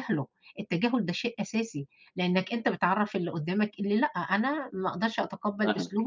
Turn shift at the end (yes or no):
no